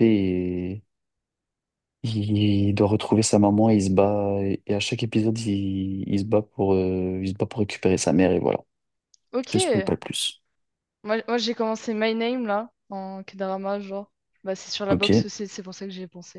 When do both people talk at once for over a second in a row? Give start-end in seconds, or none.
none